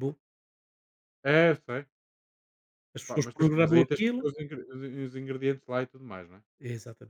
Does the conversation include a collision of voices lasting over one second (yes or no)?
yes